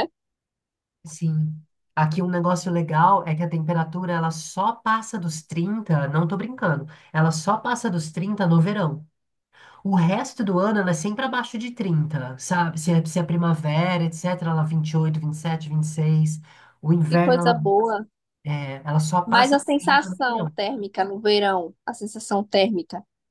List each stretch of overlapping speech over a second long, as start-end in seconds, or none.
19.2-20.6